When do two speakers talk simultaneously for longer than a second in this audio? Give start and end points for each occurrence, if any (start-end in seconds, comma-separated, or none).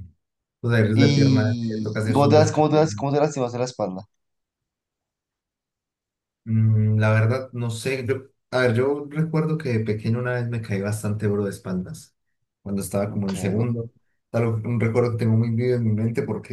0.9-2.9